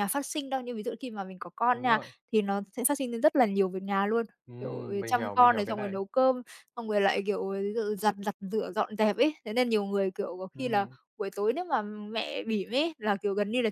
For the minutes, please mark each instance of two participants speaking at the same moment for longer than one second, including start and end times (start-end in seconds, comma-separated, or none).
4.5-6.0